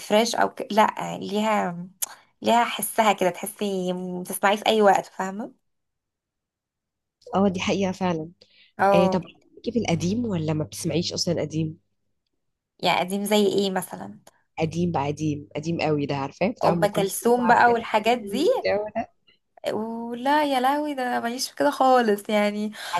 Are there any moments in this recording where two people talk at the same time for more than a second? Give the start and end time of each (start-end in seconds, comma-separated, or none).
16.7-18.5